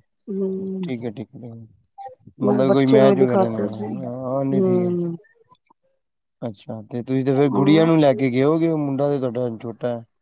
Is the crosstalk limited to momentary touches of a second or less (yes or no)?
no